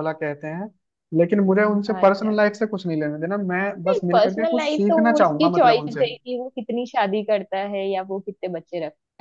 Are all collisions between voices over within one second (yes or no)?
no